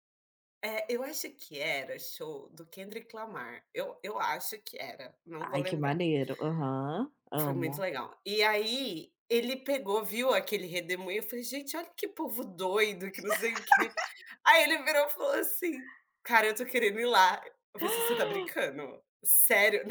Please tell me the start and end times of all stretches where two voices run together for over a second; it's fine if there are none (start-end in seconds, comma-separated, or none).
none